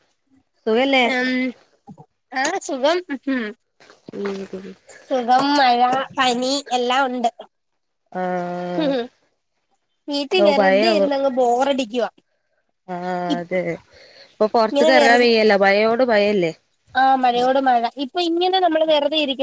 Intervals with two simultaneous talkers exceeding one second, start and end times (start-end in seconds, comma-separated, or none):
none